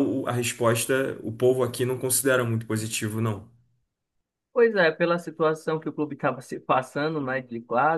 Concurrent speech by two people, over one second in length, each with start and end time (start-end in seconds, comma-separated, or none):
none